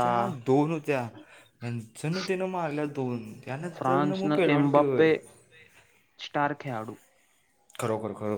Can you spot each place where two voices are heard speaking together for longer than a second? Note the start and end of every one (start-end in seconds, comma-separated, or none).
3.8-5.1